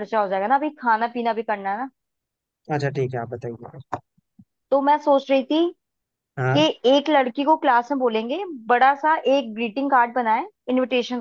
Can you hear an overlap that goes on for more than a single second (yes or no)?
no